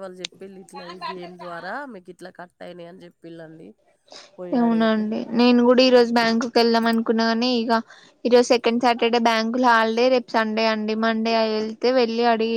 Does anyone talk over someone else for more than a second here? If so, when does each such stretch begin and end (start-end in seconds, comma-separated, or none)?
none